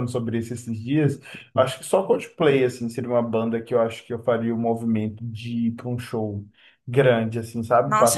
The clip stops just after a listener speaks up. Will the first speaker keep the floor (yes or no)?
no